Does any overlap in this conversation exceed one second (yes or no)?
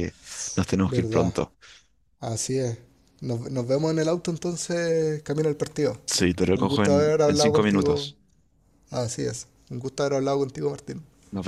yes